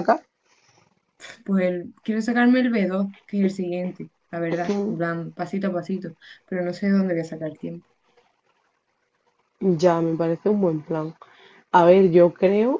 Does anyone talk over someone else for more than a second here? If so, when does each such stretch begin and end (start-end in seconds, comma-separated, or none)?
none